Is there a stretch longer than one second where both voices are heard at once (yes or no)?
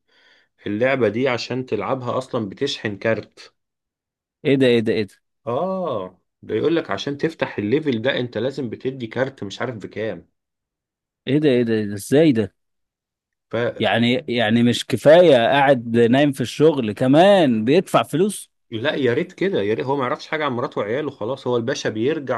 no